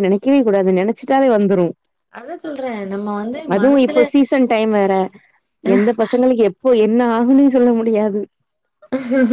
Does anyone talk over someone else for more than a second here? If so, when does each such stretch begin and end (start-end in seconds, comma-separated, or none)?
none